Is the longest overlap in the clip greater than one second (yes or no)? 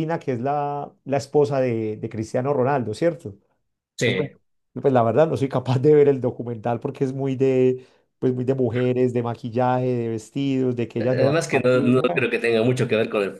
yes